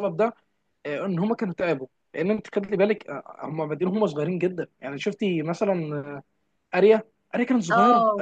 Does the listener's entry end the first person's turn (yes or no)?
no